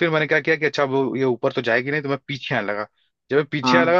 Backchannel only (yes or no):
yes